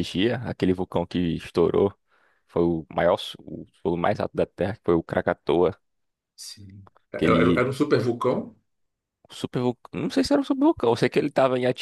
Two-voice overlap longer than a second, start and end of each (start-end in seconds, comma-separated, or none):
none